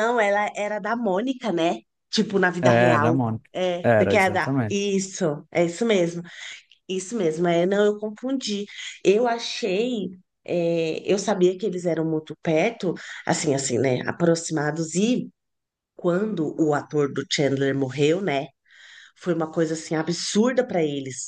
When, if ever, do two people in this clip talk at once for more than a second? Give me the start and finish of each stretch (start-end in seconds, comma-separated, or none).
2.6-4.8